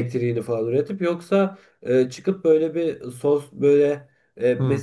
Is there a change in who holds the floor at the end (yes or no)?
no